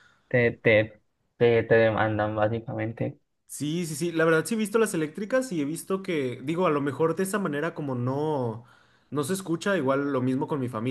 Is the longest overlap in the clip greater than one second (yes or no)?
no